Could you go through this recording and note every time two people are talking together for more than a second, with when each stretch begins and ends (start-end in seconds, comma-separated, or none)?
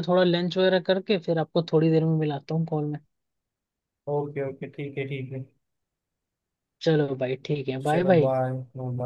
none